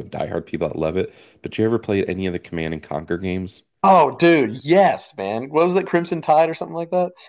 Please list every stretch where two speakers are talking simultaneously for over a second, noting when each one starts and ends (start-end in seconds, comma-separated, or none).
none